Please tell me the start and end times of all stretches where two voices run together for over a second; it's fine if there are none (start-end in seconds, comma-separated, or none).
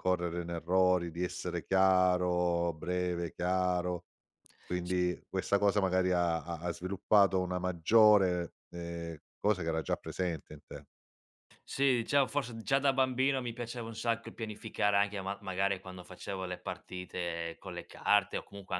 none